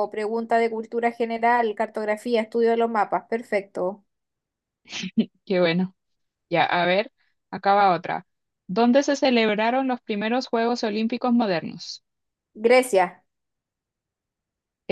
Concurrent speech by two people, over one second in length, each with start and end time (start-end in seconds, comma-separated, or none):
none